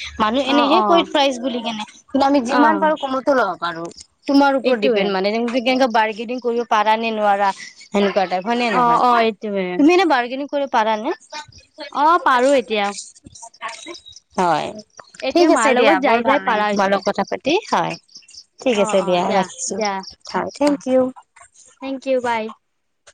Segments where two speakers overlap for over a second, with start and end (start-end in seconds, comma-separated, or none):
15.3-17.0